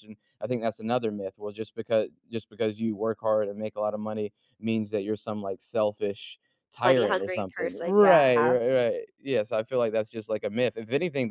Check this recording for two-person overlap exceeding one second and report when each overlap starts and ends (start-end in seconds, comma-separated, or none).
6.8-8.6